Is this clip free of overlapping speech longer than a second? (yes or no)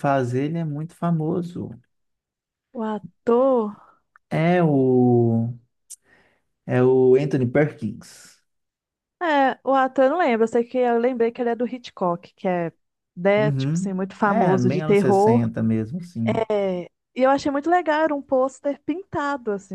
no